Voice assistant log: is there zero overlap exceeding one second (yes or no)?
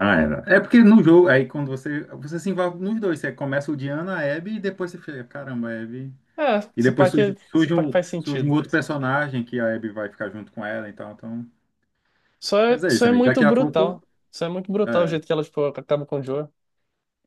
no